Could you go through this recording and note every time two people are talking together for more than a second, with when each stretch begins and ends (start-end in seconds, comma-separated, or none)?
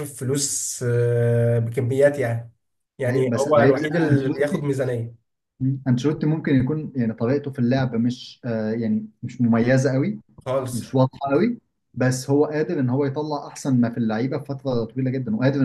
3.1-4.7